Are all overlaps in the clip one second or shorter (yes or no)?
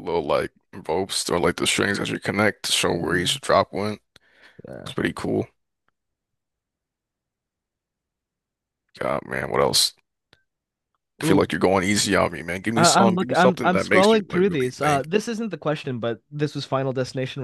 no